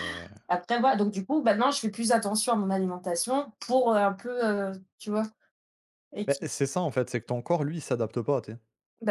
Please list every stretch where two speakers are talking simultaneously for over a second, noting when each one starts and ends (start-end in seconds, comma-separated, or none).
none